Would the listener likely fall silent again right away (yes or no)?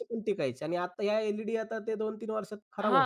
no